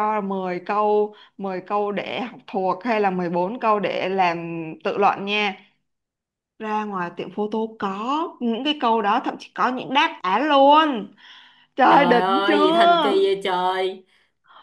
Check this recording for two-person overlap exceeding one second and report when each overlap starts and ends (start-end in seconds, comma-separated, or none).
11.9-13.2